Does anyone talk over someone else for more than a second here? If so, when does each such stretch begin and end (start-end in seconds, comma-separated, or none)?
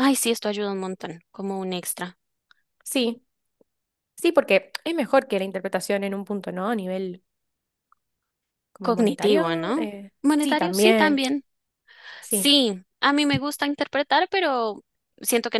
8.8-11.2